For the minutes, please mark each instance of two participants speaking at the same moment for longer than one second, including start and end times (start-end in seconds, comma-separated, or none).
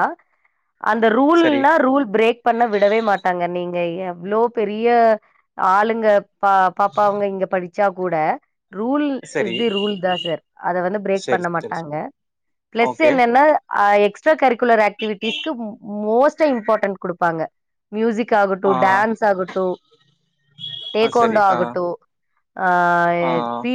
none